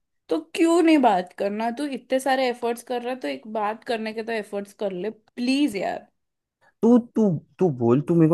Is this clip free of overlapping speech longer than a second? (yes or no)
yes